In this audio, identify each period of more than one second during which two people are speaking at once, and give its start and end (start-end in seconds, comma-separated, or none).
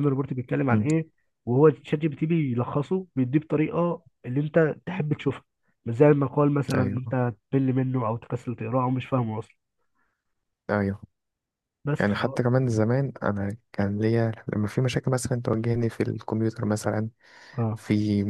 none